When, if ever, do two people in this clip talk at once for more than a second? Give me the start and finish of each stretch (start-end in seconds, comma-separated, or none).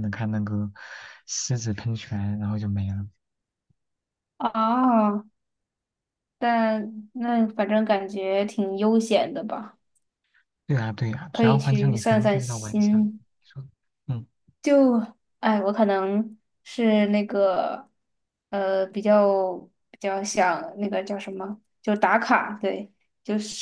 11.3-13.2